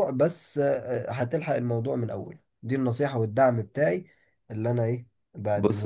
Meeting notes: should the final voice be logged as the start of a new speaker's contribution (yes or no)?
yes